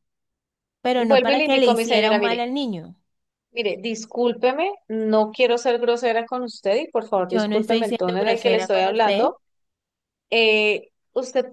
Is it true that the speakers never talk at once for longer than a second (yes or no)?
no